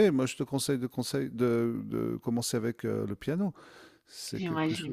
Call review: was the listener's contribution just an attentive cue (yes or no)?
no